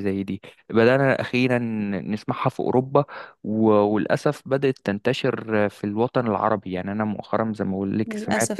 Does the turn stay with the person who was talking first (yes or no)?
yes